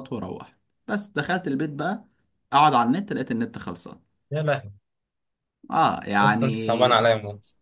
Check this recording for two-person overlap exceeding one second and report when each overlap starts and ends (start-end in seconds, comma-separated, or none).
none